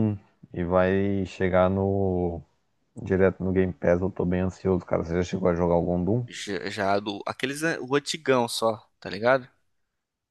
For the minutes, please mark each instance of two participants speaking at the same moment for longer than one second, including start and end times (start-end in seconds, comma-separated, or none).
none